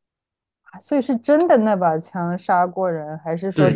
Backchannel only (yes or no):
no